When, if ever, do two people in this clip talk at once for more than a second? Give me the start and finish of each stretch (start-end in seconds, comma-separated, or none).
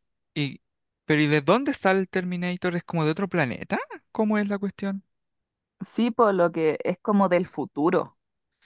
none